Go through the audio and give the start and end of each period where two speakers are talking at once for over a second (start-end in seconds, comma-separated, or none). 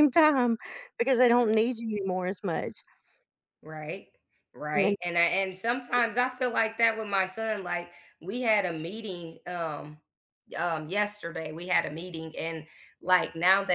none